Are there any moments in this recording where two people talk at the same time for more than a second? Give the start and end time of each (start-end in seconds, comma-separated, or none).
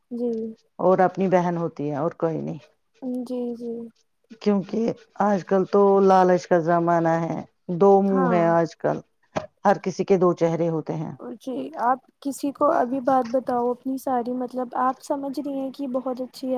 none